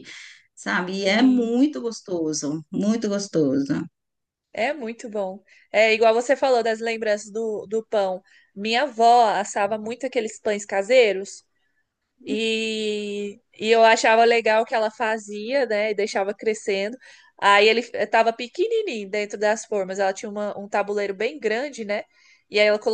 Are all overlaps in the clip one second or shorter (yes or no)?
yes